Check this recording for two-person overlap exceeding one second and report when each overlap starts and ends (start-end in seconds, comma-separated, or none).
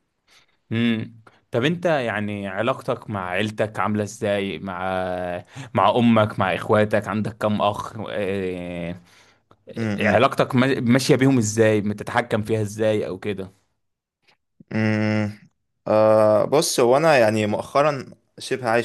none